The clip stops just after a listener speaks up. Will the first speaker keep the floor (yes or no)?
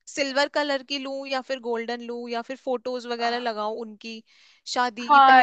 no